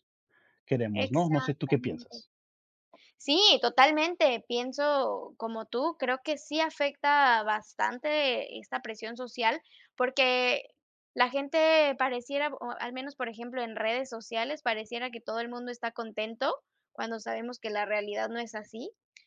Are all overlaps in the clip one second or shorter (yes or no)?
no